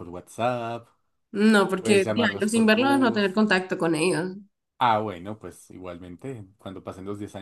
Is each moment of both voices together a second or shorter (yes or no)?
no